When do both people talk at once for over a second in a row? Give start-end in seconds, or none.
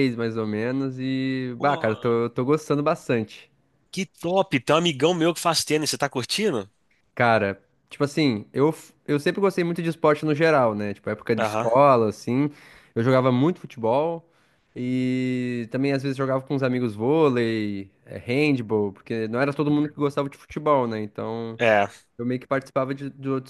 none